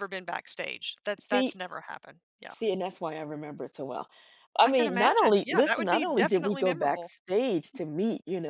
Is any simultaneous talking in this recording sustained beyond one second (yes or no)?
yes